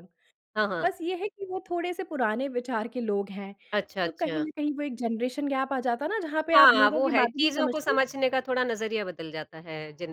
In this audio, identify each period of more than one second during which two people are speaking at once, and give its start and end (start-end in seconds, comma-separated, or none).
6.5-8.0